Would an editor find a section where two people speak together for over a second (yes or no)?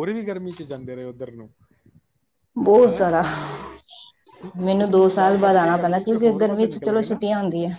yes